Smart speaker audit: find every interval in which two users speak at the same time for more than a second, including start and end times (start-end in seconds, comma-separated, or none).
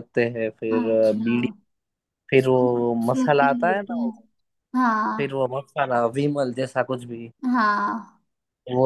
2.4-4.1